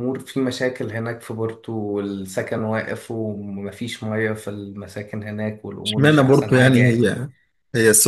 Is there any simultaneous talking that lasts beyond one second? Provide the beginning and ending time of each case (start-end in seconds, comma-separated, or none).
5.8-7.1